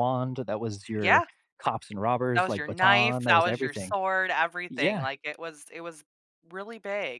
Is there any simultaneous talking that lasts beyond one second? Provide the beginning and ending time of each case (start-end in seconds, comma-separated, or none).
2.3-3.9